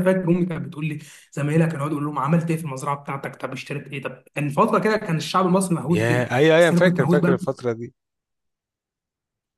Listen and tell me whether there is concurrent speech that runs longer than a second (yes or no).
yes